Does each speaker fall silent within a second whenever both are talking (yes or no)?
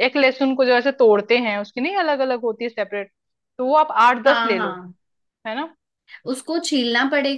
yes